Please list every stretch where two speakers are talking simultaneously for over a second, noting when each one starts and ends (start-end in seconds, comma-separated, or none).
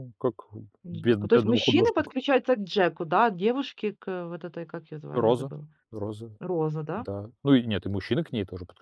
0.9-2.1